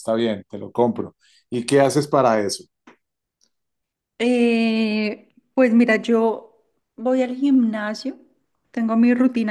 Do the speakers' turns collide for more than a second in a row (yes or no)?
no